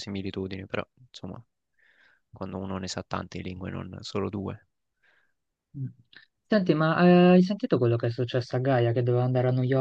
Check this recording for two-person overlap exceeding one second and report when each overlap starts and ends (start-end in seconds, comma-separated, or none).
none